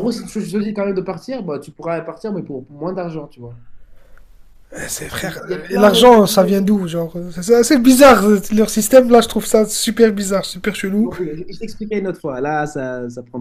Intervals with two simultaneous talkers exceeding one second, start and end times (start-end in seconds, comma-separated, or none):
5.1-6.5